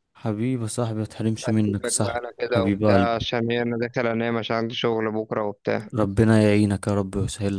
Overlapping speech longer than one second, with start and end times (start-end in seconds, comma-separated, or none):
1.4-3.3